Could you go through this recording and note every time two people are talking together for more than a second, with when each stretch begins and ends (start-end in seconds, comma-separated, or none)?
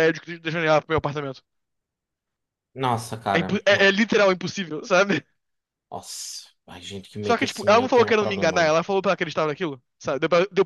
7.2-8.7